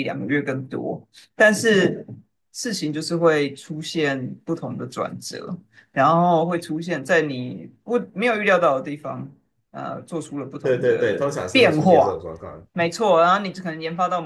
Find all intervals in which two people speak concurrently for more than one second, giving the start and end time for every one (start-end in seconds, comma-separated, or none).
10.6-12.2